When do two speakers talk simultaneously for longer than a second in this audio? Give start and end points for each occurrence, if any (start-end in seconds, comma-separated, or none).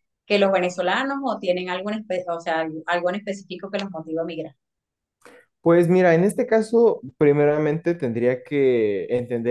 none